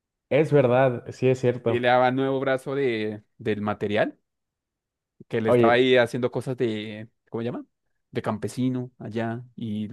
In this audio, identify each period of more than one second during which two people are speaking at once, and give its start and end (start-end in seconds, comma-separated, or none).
none